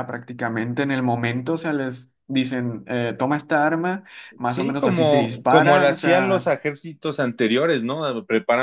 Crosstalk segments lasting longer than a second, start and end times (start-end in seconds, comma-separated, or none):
4.5-6.5